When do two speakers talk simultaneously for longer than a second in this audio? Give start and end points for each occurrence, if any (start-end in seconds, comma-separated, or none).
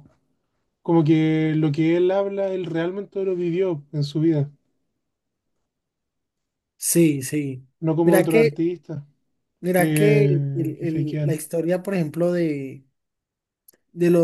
9.8-11.4